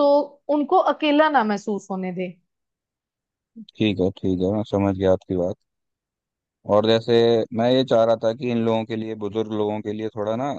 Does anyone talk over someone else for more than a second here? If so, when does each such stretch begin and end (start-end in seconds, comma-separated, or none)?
none